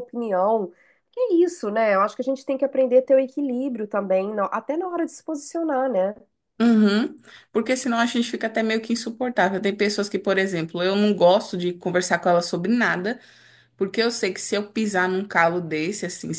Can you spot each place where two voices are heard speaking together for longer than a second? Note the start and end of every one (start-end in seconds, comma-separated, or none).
none